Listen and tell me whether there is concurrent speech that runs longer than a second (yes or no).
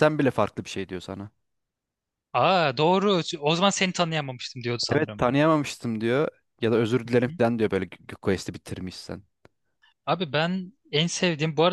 no